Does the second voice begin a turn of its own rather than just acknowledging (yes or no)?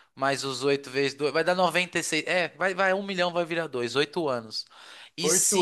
no